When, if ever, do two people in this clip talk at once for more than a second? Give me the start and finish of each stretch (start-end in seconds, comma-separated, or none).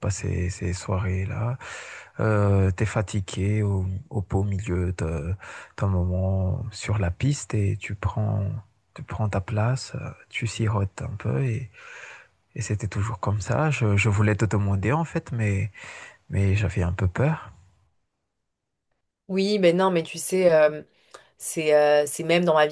none